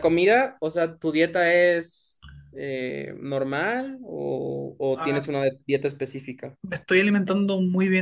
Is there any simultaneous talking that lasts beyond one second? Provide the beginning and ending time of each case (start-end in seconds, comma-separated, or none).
none